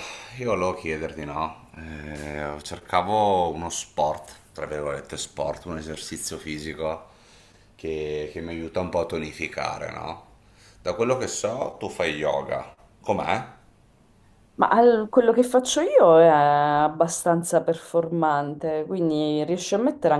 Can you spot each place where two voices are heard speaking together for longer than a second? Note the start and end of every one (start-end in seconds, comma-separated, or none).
none